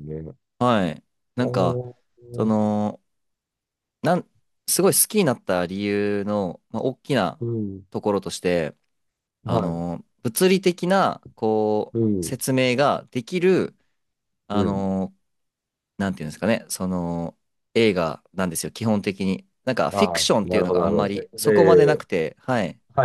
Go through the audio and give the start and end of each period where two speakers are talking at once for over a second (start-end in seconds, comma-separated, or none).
19.9-22.0